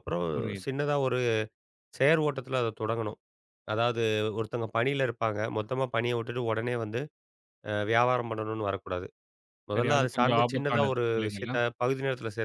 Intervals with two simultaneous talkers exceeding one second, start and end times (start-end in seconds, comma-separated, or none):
9.7-11.6